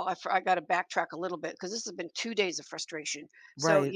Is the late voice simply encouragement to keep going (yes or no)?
yes